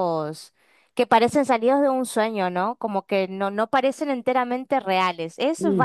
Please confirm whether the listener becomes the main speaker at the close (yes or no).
yes